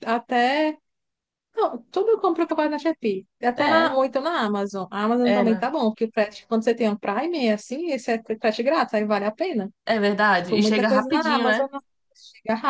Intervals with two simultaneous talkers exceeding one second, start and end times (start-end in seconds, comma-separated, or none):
10.3-11.6